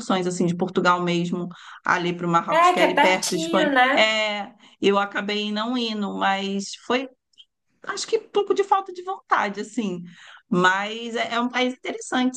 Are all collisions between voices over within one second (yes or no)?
no